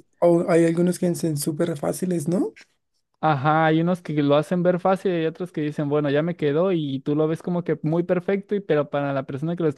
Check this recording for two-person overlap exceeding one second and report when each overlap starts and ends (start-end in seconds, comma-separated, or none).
none